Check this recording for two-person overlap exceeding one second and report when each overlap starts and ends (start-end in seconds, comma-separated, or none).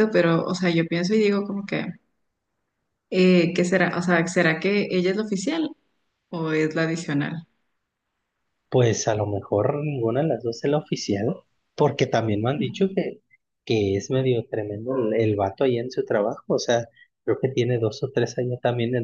none